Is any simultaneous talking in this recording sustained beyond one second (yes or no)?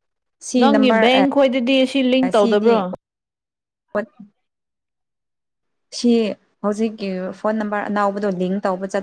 yes